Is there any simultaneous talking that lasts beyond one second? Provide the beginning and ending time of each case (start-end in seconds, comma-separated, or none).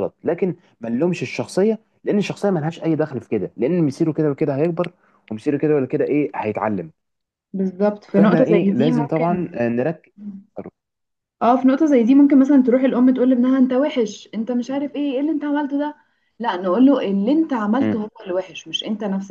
8.2-9.4